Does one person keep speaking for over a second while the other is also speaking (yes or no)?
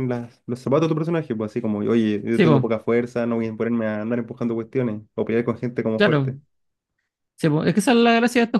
no